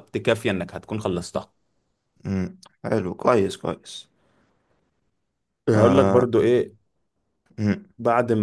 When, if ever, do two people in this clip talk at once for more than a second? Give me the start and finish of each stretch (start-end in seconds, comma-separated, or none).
none